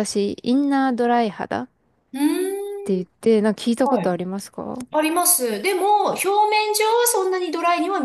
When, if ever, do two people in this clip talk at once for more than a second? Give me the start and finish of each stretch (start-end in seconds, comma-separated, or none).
none